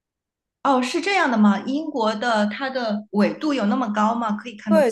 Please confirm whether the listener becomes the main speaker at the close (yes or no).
yes